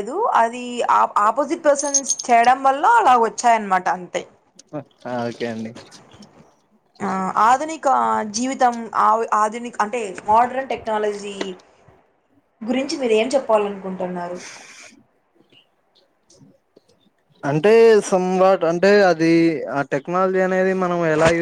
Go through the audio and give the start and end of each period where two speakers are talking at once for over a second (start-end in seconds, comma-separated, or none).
none